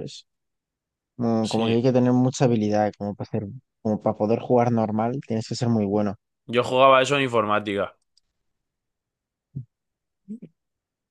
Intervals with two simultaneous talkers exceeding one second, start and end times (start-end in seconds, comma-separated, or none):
none